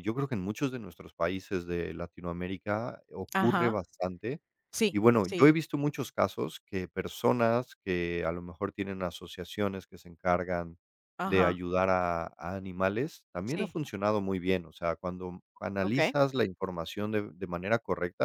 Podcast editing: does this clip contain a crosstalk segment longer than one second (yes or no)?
no